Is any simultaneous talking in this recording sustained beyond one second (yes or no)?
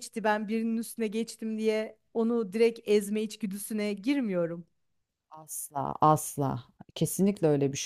no